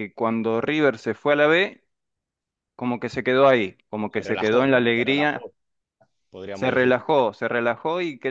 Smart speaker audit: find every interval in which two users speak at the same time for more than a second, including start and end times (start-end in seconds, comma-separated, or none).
4.1-5.5